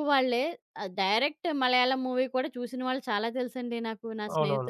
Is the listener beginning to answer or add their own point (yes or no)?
yes